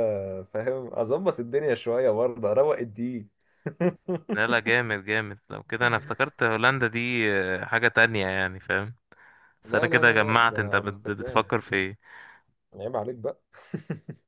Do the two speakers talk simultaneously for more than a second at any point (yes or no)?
yes